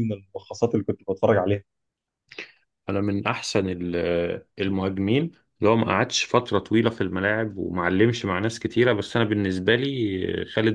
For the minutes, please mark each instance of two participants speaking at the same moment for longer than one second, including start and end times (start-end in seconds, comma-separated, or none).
none